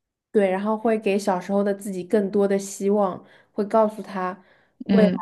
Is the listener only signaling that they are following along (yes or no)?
yes